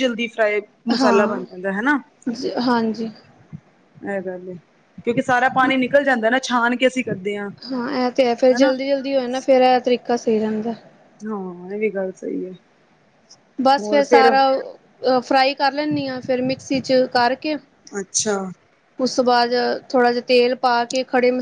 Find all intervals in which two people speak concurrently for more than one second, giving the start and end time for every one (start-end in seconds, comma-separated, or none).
none